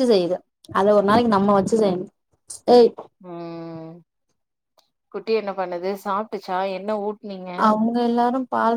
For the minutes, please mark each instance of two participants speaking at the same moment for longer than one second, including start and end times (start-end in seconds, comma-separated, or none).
none